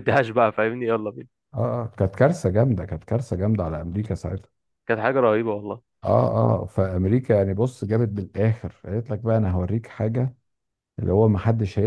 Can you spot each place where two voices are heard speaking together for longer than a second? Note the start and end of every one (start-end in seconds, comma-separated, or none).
none